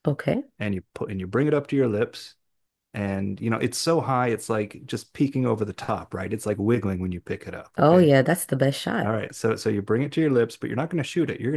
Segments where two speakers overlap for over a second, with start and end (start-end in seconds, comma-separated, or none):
none